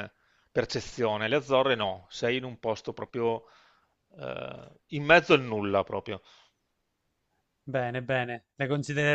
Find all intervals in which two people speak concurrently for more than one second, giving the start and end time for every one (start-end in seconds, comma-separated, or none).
none